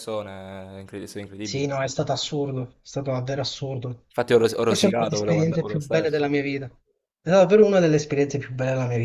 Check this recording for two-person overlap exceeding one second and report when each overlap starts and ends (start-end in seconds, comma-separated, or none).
4.6-6.2